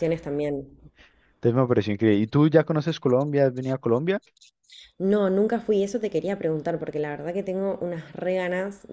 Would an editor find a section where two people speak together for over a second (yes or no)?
no